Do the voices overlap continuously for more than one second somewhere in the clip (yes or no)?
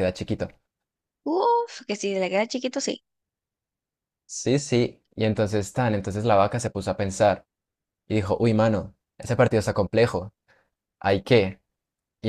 no